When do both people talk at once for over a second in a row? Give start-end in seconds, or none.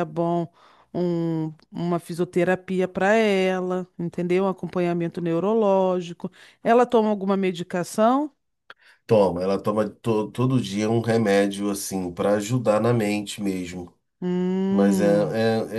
none